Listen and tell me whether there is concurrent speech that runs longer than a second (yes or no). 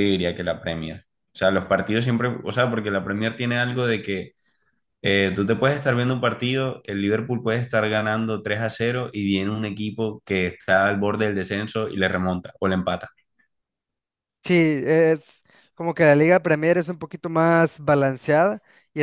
no